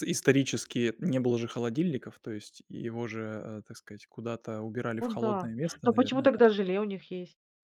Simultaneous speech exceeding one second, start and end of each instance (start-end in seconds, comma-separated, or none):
5.0-6.4